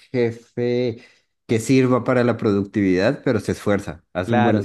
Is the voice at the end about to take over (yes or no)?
yes